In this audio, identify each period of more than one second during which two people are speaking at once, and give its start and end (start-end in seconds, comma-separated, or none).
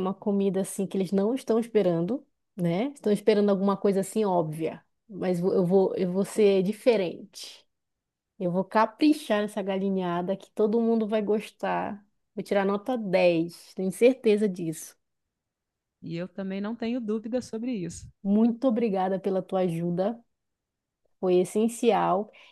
none